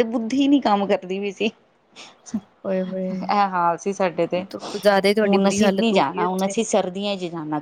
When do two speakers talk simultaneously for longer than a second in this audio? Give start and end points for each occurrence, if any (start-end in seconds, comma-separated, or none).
5.2-6.5